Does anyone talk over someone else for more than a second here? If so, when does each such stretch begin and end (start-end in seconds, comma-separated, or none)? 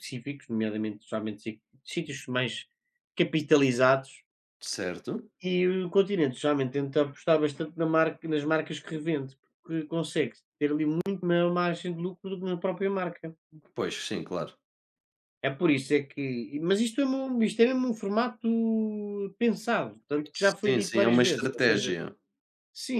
20.3-21.9